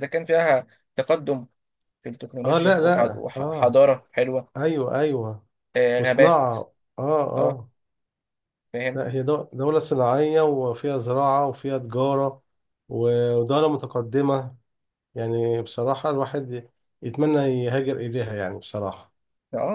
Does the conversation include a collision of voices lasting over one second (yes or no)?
yes